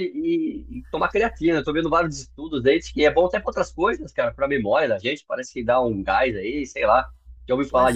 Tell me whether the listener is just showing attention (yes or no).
no